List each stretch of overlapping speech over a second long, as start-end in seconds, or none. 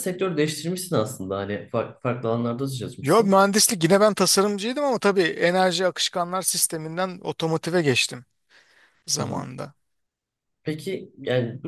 none